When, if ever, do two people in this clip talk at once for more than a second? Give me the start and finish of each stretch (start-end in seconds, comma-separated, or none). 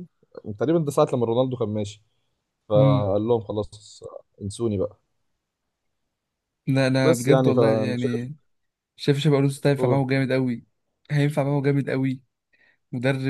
7.0-8.3